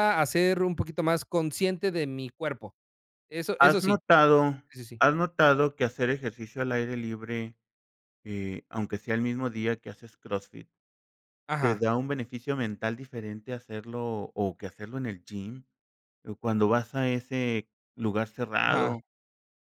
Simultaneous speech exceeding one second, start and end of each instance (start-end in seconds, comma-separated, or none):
none